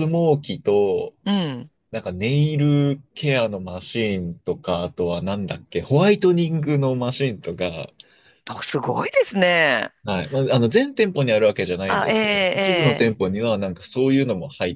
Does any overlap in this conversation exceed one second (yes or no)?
yes